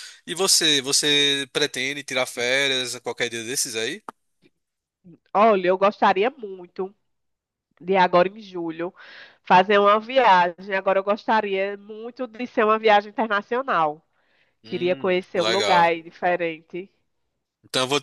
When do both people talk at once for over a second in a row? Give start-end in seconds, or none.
14.6-15.9